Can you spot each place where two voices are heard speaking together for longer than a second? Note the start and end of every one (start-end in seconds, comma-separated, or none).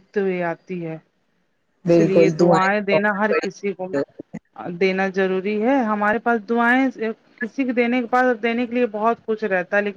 1.9-3.9